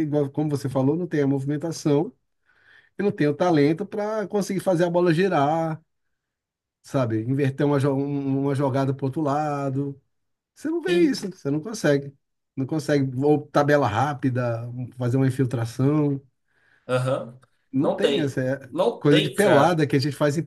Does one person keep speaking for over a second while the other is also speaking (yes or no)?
yes